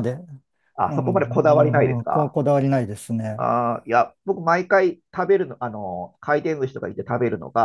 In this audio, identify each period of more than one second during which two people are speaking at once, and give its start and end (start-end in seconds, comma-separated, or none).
0.9-2.4